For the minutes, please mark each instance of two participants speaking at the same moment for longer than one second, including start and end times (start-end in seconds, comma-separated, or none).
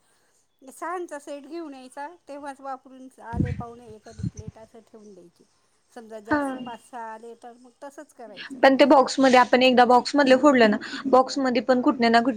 none